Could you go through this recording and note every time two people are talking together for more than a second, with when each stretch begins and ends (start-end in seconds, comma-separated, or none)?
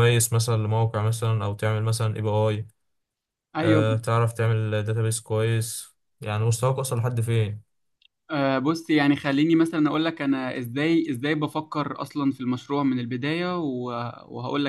none